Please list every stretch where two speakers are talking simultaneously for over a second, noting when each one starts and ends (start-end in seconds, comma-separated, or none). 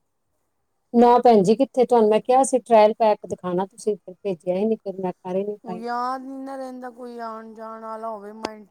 none